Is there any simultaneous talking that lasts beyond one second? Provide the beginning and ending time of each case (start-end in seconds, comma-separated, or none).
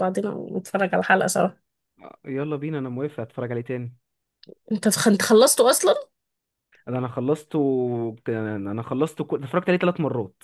none